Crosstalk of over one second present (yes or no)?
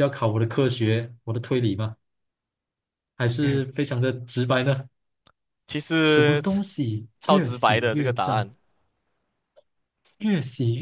yes